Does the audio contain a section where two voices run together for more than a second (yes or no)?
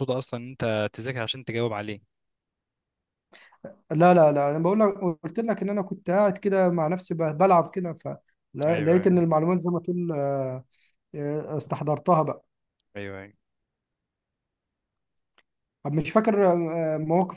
no